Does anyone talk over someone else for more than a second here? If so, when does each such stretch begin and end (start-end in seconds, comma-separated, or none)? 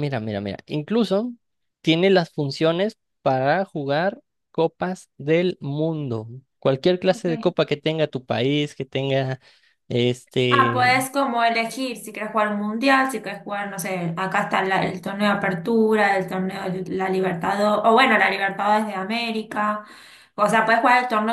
none